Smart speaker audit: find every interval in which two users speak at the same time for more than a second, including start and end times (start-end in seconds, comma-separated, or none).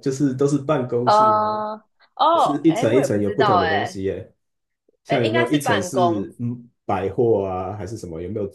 2.3-4.0, 5.1-6.3